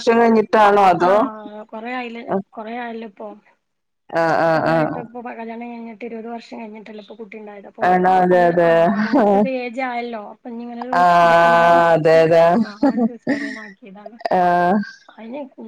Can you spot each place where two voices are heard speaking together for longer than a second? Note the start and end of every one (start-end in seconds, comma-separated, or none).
none